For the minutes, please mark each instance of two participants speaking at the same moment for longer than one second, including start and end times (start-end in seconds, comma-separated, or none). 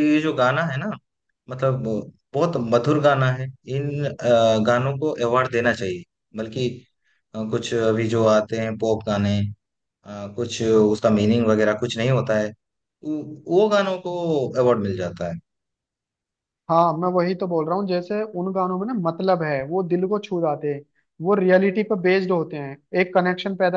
none